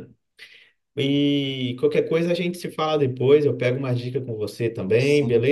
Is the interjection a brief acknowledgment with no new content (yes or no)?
yes